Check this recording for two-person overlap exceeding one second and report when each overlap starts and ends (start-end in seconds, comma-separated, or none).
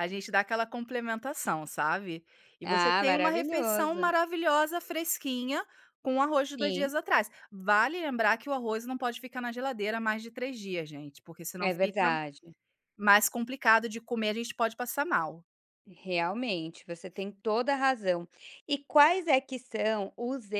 2.6-4.1